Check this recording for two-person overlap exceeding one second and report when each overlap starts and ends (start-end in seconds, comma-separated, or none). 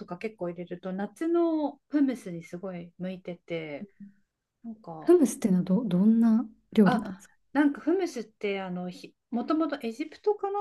none